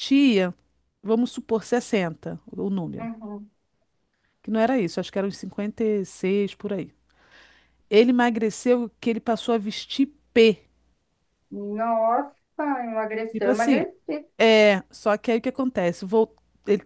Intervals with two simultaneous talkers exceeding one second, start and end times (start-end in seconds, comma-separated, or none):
none